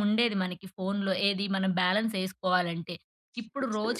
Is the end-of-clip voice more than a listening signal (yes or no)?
no